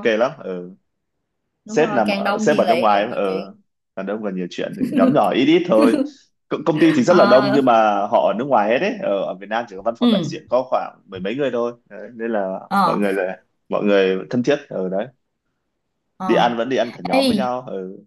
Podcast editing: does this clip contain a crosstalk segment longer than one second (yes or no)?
yes